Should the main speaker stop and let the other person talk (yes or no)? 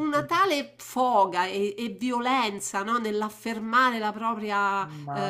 yes